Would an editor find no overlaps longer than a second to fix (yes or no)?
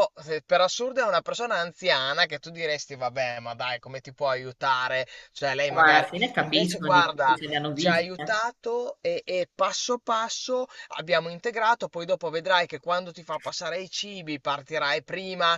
no